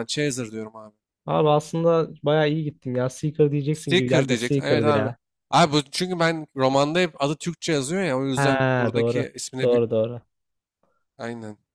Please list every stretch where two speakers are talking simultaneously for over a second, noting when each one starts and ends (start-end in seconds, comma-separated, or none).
3.7-5.1, 8.3-9.8